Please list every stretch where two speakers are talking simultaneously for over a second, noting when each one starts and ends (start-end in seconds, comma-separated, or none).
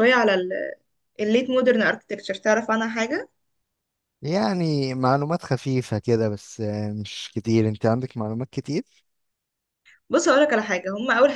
none